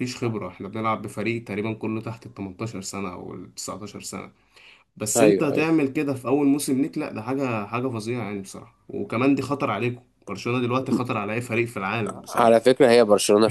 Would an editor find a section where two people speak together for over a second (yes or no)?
no